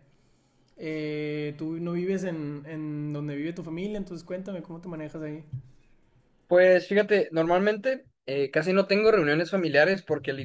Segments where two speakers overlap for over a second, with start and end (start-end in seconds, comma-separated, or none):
none